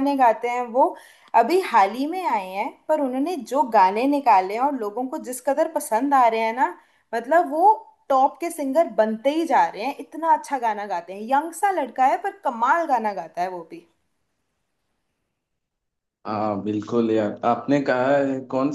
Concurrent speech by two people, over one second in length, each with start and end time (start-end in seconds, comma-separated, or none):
none